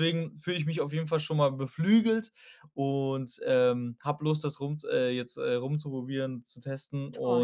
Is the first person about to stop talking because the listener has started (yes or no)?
no